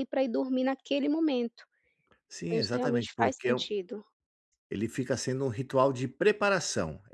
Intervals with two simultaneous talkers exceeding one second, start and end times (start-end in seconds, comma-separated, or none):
2.5-3.7